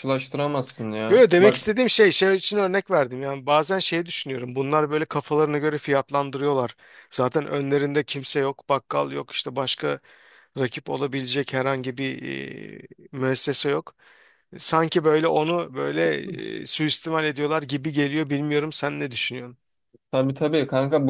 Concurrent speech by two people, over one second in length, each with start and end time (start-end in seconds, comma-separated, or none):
none